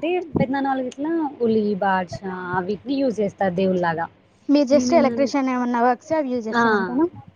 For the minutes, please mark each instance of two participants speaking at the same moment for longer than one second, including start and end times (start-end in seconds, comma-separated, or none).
none